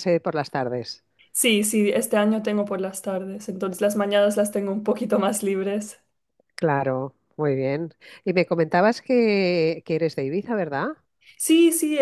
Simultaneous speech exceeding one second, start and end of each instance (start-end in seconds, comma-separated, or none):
none